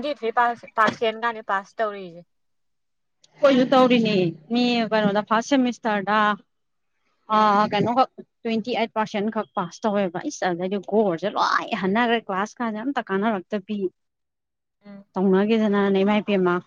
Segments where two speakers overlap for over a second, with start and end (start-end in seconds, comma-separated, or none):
none